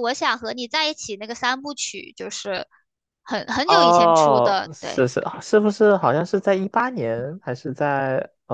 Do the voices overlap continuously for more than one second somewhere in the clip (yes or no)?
yes